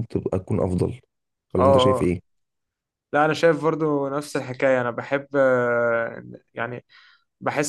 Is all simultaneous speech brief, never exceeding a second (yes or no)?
yes